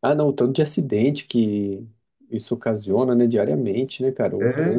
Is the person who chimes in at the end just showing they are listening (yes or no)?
yes